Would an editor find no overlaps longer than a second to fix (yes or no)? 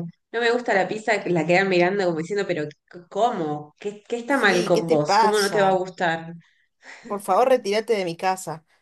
no